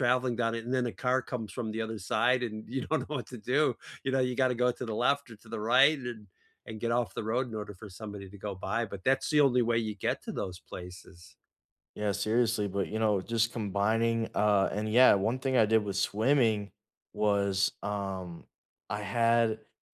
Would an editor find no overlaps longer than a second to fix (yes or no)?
yes